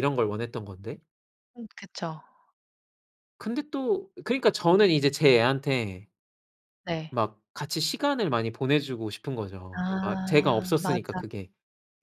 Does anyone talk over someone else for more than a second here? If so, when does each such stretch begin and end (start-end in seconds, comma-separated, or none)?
9.7-11.2